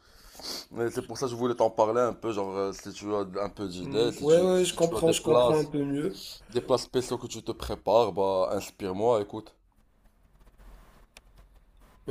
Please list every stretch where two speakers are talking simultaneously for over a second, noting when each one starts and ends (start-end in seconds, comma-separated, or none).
3.8-5.5